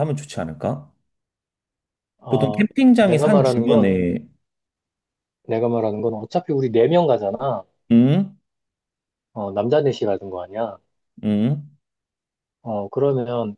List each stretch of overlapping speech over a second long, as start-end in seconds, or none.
2.3-3.9